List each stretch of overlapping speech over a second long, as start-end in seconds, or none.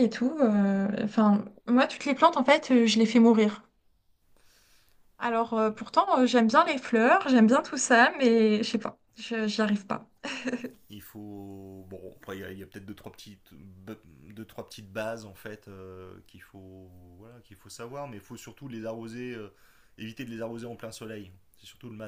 none